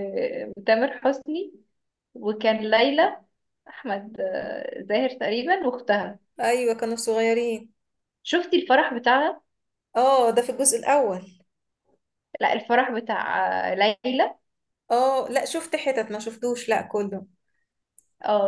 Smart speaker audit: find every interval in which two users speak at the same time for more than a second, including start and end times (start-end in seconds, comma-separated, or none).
none